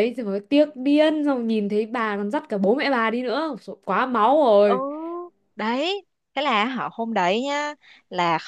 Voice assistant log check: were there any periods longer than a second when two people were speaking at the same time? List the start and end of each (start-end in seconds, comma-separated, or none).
none